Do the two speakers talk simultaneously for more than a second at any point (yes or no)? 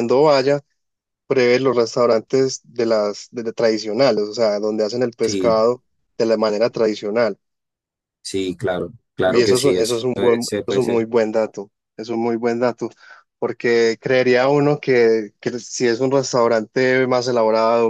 yes